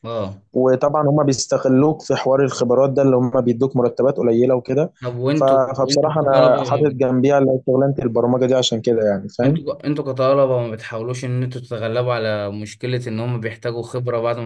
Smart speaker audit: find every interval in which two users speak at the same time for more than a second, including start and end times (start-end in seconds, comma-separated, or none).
5.4-7.0